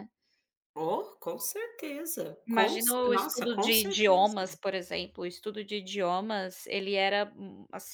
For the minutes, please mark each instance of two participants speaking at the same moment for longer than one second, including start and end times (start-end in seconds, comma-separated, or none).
2.5-4.3